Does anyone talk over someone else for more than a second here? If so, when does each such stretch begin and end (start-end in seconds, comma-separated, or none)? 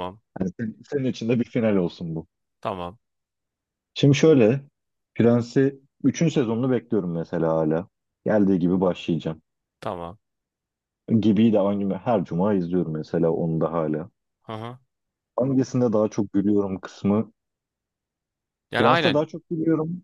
none